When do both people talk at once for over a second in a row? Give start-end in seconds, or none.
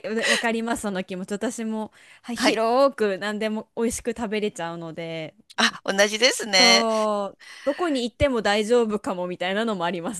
none